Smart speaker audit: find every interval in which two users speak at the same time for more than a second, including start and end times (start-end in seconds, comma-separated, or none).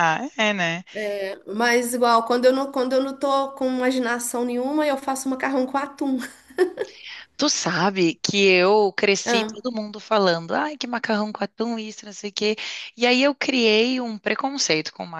none